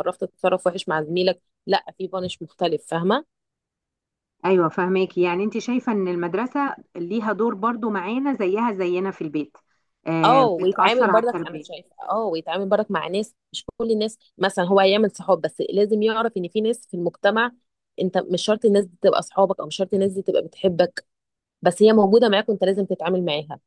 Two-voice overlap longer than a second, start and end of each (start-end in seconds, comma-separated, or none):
10.2-11.7